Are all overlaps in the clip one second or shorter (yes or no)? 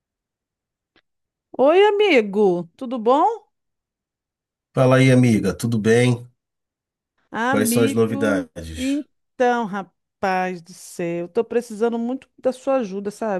no